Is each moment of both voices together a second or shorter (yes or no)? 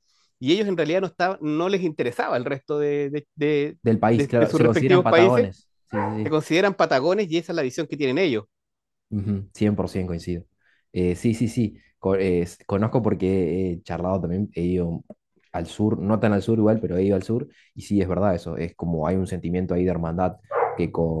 no